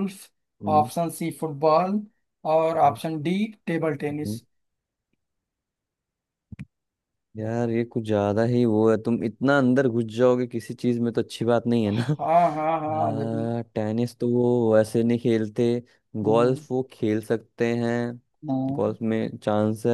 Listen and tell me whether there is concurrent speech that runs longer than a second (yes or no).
no